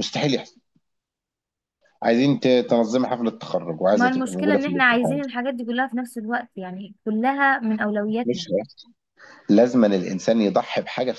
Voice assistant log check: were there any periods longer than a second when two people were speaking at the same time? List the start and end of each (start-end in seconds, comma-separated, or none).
3.9-5.2